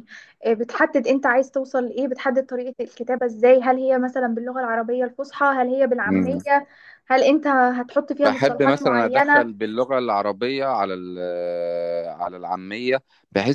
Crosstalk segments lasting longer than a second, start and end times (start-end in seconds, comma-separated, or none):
8.2-9.5